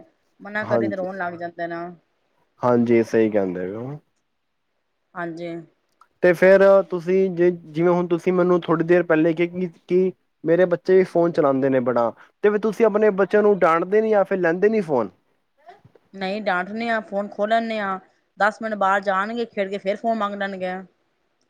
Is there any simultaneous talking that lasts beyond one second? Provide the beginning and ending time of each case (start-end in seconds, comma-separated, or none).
none